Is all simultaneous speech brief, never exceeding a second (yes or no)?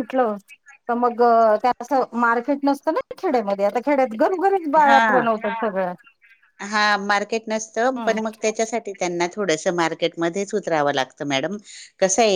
yes